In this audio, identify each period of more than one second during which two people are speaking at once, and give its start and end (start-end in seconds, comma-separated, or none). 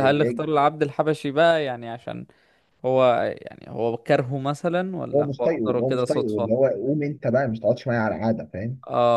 5.1-6.6